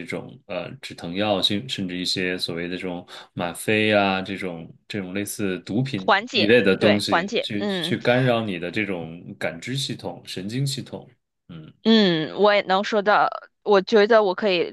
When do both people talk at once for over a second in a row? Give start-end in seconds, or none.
6.0-8.0